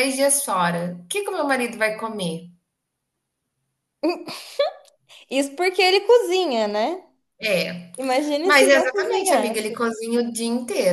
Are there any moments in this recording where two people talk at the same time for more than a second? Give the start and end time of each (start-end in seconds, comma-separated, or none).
8.4-9.9